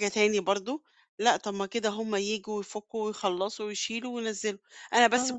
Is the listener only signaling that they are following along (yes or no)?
yes